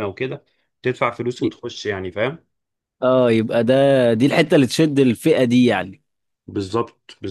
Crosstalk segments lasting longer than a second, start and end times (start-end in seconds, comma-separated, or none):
none